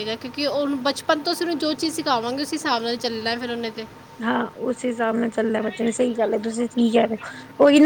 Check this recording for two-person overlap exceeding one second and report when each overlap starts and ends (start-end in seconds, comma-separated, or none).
none